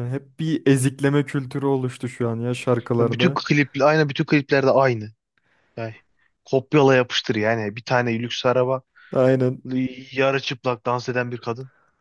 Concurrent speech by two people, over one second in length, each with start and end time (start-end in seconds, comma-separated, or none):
none